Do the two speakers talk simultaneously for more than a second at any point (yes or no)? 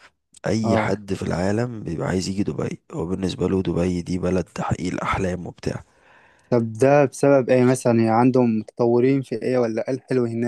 no